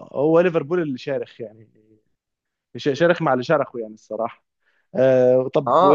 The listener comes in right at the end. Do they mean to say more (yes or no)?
yes